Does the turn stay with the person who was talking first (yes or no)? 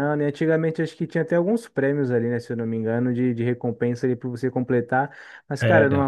yes